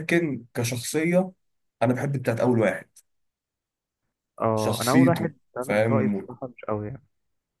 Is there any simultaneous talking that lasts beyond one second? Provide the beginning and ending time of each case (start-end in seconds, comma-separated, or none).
4.5-6.3